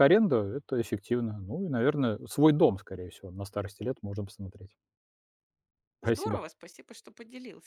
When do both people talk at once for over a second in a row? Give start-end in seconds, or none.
none